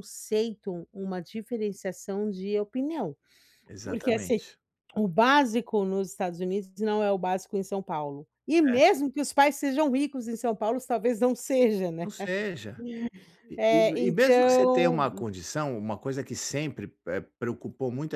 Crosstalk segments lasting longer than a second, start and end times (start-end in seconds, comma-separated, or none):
13.6-15.1